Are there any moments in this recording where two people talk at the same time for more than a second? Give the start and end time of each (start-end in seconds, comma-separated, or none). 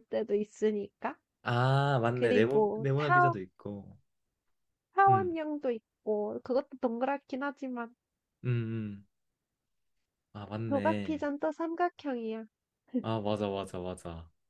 2.1-3.3